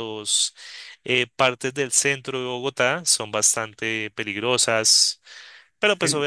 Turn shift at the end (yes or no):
no